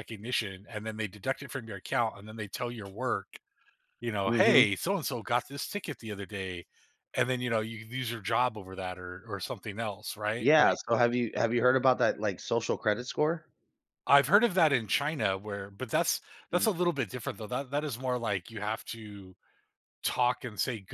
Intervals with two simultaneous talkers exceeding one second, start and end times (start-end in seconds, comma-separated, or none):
none